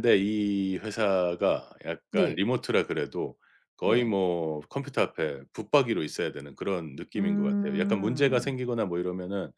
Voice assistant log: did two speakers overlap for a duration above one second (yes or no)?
yes